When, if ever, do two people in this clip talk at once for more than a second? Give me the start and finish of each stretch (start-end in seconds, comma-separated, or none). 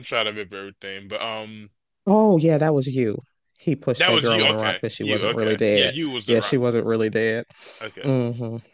4.0-6.6